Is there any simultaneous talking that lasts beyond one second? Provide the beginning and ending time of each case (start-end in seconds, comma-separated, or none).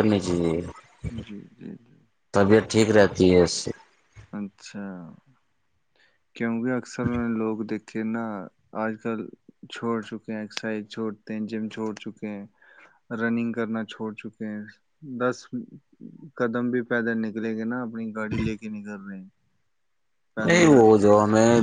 none